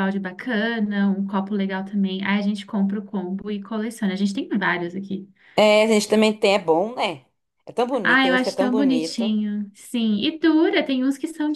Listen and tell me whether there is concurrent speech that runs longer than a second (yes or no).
yes